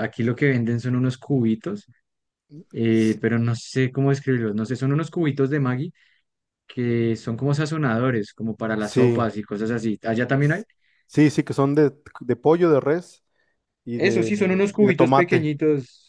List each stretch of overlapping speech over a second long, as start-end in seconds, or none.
13.9-15.5